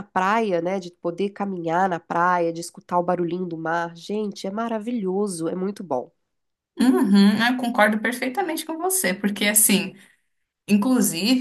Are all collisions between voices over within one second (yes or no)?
yes